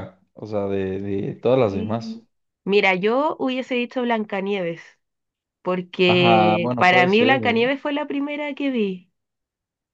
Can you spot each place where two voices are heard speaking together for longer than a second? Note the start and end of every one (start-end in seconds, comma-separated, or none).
6.1-7.6